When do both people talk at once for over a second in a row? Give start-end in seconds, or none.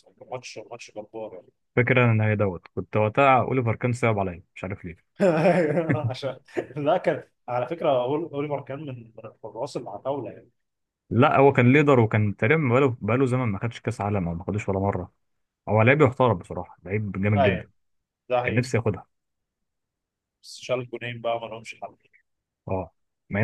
none